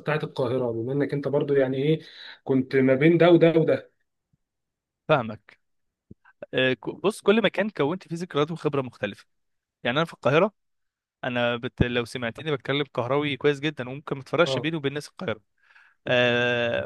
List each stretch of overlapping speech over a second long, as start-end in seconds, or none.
none